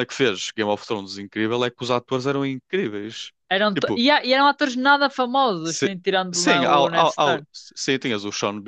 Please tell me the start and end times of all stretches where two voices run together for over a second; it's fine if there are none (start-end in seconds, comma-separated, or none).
5.6-7.5